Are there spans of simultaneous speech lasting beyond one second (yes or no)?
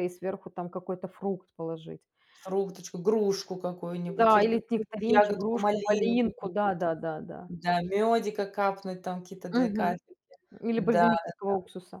yes